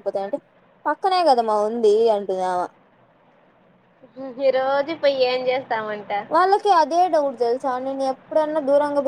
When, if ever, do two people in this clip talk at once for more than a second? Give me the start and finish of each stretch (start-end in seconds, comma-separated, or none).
none